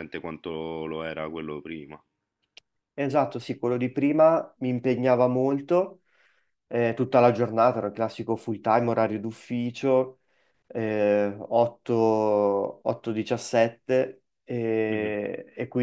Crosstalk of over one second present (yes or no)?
no